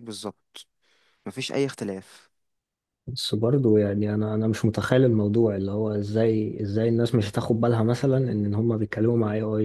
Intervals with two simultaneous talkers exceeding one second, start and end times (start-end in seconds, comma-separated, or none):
none